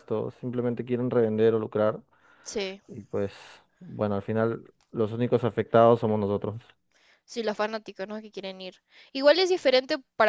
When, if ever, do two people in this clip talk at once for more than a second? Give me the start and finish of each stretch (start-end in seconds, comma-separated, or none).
none